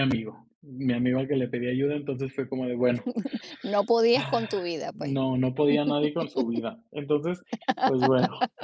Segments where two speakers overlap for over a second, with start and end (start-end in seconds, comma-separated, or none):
none